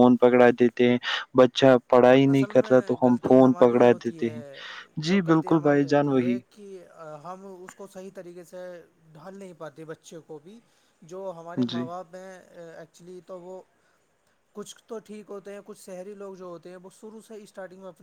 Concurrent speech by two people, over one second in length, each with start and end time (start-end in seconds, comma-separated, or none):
2.3-4.4